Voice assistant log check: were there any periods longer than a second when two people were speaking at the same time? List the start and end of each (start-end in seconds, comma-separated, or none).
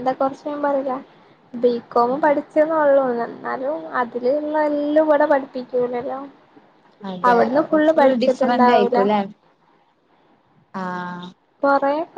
7.3-9.0